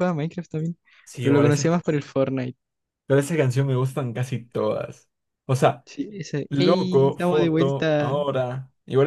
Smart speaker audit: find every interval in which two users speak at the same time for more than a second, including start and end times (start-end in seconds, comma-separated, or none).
6.5-8.2